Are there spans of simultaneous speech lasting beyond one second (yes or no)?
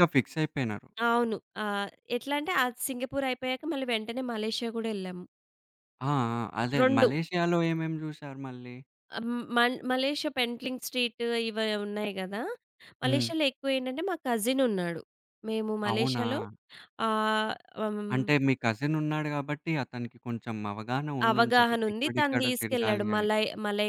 yes